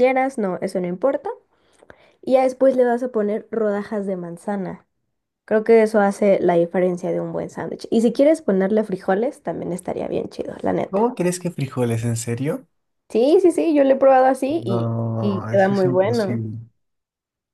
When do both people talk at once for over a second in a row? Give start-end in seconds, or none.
14.5-16.5